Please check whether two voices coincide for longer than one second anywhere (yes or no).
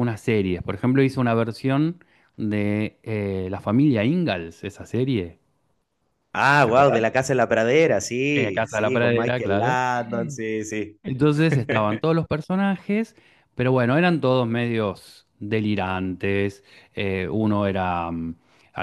yes